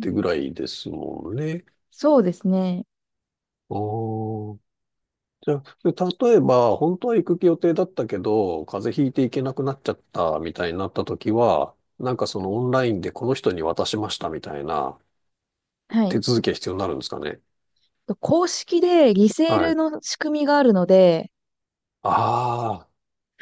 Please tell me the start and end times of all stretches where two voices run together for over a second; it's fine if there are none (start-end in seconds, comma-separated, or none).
none